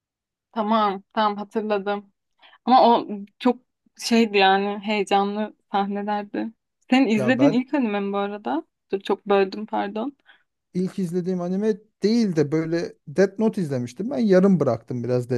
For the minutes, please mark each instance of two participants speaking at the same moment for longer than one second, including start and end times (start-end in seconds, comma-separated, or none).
none